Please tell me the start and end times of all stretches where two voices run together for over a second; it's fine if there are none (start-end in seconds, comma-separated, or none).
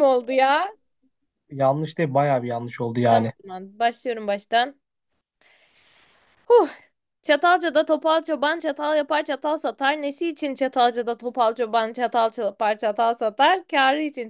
none